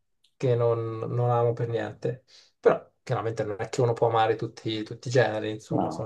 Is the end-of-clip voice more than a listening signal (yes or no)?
no